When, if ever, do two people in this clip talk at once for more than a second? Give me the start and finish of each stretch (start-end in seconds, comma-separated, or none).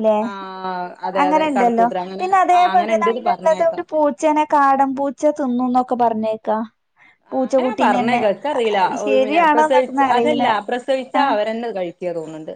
1.2-3.8